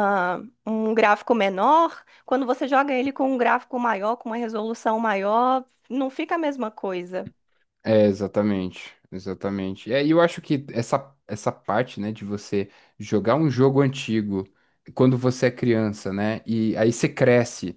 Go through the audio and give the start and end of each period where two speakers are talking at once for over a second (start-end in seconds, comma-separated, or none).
none